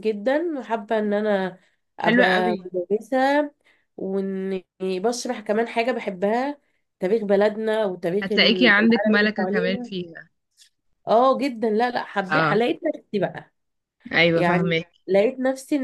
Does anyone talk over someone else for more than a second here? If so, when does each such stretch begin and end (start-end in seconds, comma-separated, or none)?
8.2-9.9